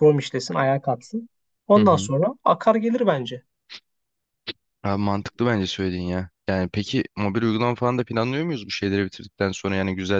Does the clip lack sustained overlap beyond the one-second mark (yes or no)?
yes